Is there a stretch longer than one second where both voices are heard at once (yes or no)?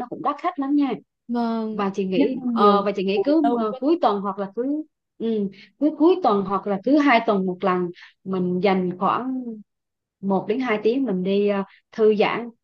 yes